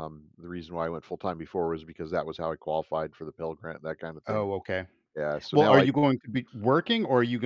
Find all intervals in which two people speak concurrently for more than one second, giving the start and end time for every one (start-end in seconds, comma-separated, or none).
none